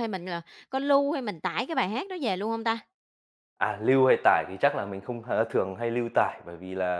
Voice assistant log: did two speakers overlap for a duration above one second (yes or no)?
no